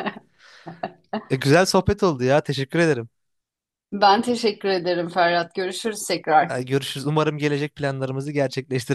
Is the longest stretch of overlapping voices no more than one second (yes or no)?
yes